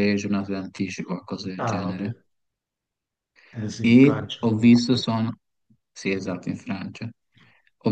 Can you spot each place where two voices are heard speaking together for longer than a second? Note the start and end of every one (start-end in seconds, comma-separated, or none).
3.8-5.1